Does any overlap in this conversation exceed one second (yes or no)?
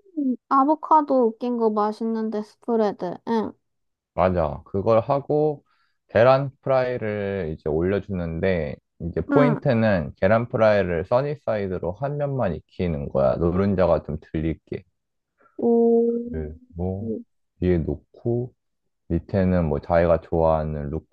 no